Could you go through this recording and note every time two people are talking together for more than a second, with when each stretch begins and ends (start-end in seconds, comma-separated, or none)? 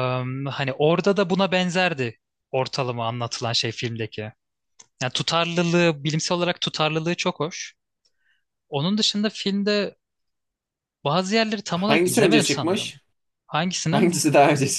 11.7-12.9